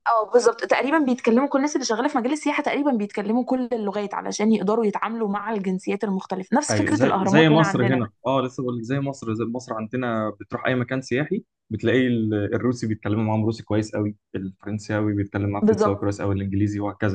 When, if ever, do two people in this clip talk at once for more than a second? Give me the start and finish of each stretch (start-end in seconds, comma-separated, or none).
6.7-8.0